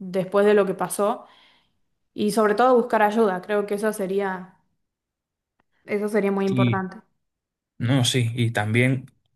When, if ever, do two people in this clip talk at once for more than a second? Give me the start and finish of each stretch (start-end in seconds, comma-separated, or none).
none